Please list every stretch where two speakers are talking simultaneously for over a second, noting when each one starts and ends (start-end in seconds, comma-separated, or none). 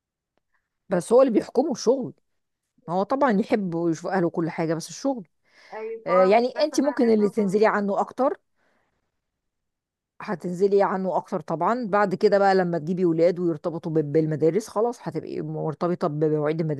6.0-7.8